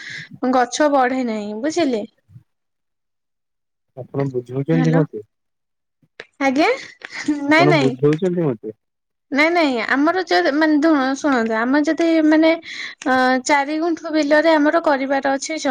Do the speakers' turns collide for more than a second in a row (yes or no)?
no